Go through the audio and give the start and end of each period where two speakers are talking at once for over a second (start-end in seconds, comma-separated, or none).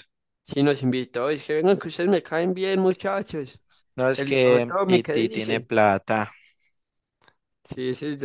4.2-5.7